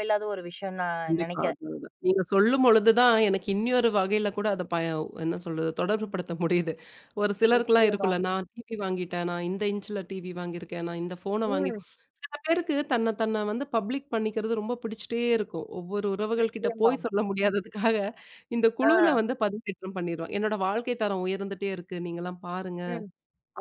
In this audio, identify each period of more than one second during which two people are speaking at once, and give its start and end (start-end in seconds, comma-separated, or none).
none